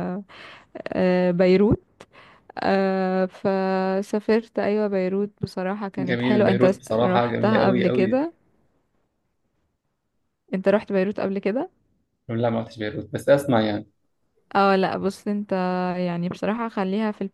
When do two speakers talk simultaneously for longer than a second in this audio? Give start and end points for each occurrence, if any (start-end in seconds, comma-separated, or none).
6.0-8.2